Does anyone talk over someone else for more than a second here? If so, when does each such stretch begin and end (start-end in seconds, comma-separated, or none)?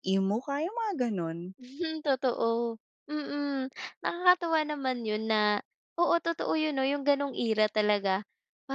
none